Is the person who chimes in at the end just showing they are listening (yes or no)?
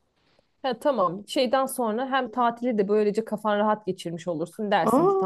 yes